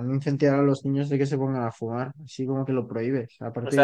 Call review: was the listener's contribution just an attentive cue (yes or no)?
no